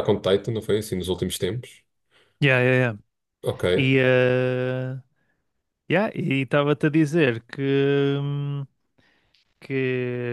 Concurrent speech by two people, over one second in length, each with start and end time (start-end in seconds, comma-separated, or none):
none